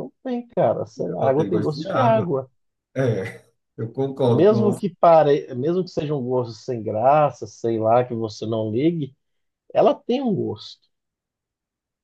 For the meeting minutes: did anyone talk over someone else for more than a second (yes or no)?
yes